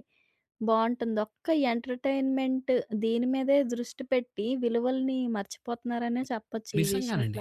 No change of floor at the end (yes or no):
no